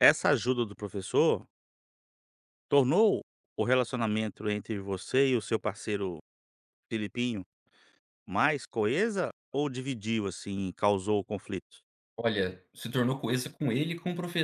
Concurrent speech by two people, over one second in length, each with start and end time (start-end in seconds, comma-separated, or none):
none